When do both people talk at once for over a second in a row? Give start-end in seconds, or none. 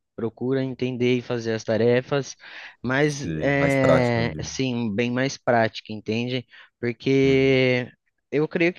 3.0-4.6